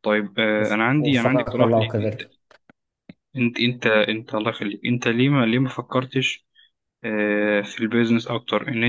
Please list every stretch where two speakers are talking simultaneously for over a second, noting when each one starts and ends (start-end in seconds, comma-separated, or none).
0.6-2.2